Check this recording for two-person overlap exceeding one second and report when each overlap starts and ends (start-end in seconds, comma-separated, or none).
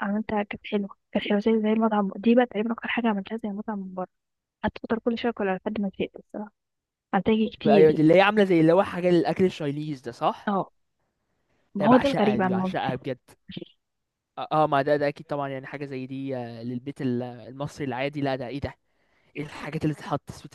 11.8-13.0